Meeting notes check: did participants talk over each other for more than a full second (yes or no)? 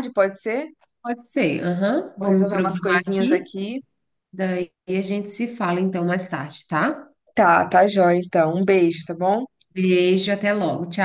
yes